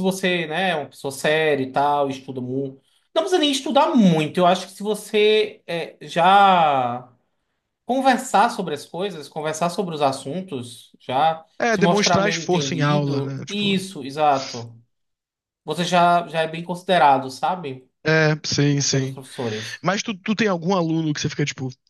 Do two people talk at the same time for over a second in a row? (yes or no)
yes